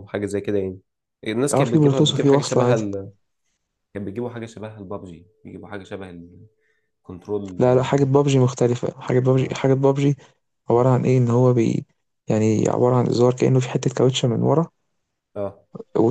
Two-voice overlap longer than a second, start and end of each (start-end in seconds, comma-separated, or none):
1.5-2.8